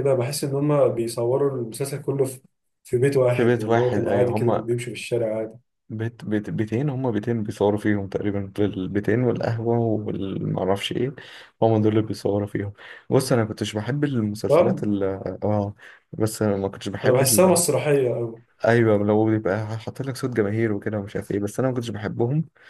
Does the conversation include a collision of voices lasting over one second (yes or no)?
yes